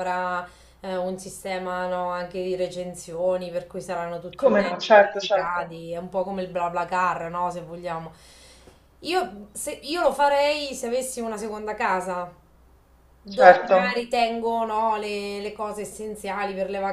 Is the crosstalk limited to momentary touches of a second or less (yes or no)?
no